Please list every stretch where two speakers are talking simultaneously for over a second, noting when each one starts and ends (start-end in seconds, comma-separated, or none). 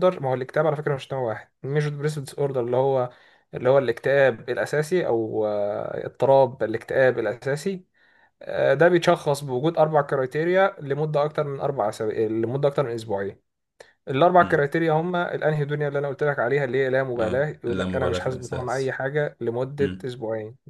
17.2-19.0